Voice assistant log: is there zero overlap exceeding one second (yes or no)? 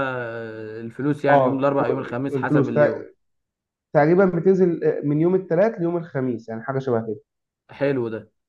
no